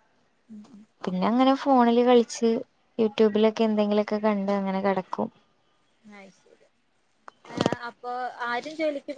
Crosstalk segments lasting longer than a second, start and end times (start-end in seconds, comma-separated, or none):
none